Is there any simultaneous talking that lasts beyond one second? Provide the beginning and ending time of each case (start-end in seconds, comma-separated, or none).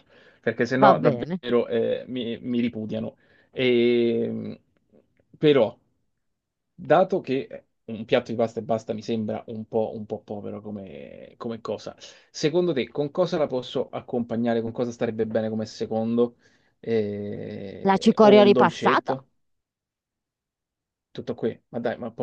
17.9-19.1